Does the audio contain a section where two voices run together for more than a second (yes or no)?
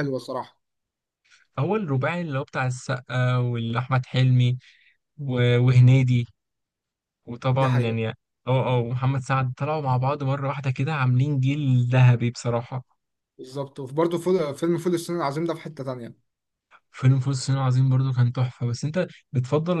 no